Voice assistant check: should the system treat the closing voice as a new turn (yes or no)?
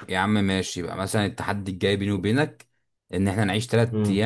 no